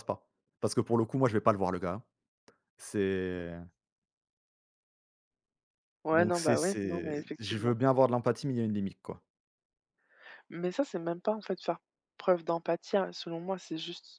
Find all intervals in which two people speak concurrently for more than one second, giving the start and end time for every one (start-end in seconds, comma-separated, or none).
6.1-7.7